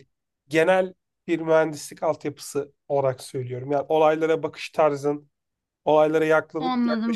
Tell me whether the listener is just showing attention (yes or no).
yes